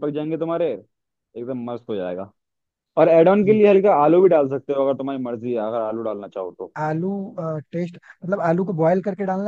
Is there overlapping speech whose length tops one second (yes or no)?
no